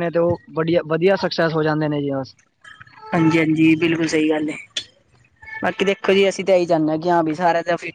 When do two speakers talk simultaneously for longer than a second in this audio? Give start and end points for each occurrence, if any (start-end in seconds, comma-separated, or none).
none